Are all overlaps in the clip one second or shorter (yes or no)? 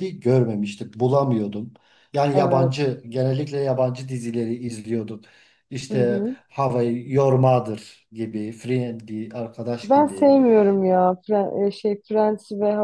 yes